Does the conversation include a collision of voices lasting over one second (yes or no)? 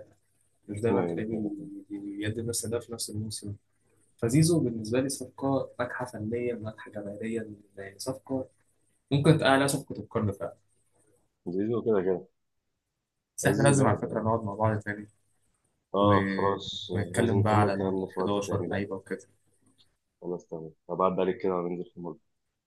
yes